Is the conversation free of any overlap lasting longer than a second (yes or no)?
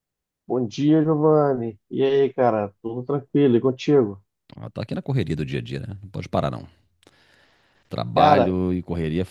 yes